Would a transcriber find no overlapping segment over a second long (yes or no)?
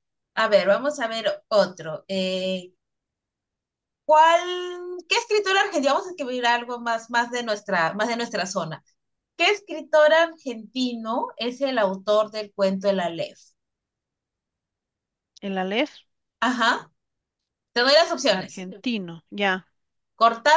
yes